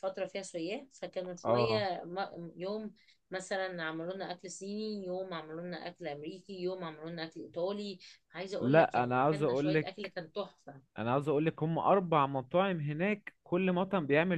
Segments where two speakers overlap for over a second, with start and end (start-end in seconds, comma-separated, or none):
8.6-10.1